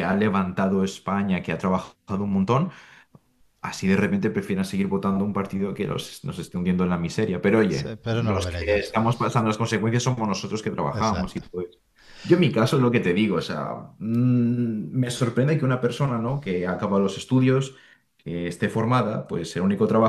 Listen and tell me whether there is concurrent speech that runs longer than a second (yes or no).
yes